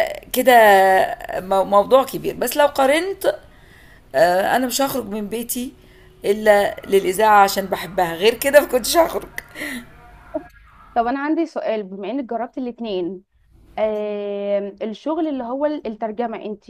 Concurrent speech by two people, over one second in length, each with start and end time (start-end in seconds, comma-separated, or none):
none